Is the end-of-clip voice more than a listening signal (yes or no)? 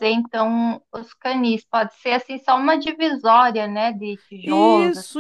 yes